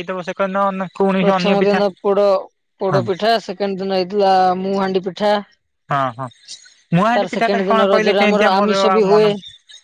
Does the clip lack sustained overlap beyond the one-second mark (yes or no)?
no